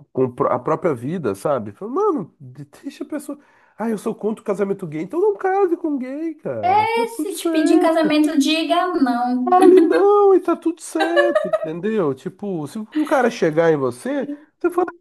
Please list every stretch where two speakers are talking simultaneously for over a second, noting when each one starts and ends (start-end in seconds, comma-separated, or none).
6.6-8.2